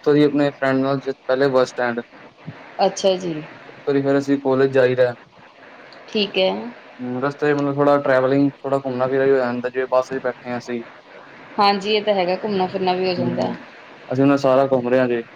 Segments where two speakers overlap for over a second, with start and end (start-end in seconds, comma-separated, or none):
none